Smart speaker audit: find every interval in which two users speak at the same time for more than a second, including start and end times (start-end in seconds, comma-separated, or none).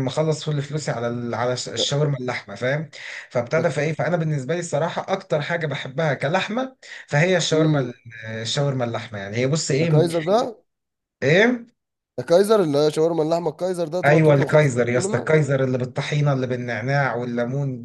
14.0-15.3